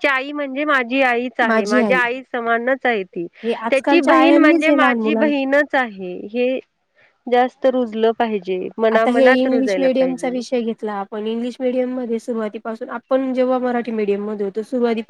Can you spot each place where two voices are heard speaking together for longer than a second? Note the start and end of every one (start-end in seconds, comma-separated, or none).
3.7-5.3, 8.9-10.3